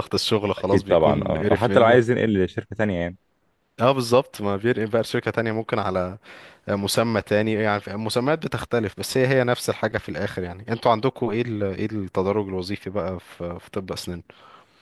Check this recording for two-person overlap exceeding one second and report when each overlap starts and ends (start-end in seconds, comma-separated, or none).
0.6-2.0